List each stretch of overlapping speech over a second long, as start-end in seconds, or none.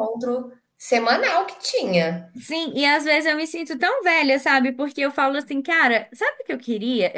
none